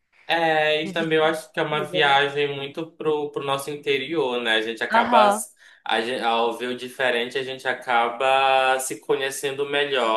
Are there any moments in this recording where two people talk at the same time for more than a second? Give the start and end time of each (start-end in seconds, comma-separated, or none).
0.8-2.2